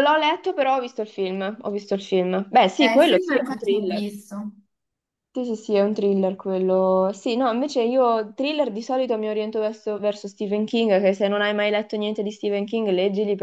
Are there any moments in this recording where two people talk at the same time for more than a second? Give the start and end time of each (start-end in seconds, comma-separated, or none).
2.8-4.1